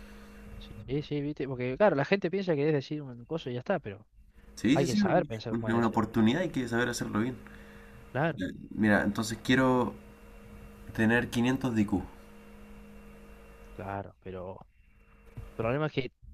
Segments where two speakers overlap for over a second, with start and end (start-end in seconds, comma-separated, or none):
4.7-6.1